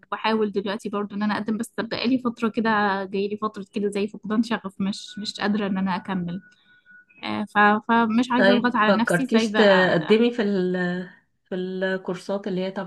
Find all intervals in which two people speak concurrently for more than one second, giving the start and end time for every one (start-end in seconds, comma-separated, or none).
8.3-10.2